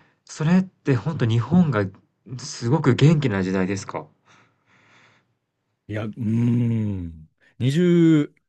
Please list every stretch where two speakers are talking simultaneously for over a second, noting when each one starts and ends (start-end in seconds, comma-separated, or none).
none